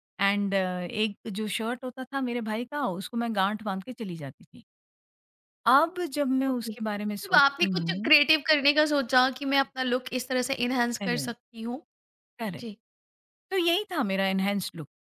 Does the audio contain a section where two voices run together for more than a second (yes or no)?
yes